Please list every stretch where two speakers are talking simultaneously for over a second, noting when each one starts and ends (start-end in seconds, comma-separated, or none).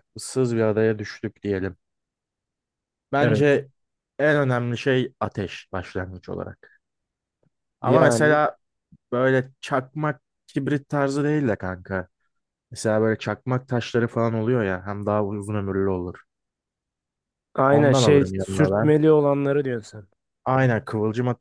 17.7-18.9